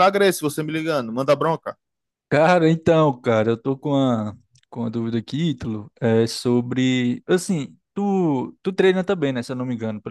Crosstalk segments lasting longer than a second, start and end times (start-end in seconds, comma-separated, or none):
none